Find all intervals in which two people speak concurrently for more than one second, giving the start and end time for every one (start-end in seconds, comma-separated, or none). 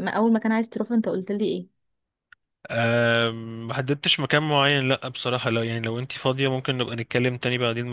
none